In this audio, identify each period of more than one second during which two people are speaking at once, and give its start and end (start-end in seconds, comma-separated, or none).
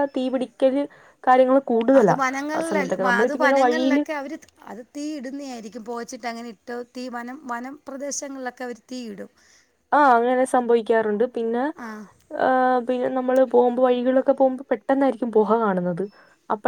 none